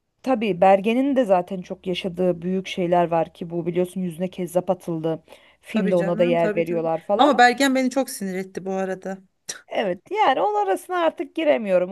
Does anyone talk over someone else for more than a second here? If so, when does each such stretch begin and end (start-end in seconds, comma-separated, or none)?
5.7-7.3